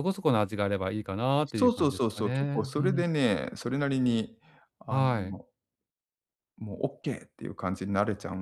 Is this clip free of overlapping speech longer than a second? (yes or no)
no